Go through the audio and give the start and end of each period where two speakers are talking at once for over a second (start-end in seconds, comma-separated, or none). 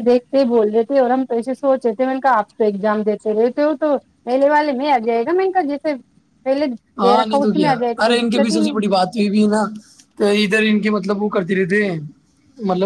7.0-8.8